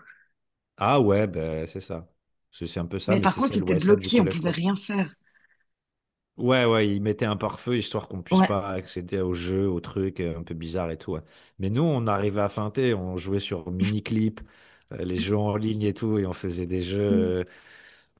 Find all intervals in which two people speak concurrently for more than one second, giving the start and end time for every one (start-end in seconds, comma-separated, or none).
3.1-4.6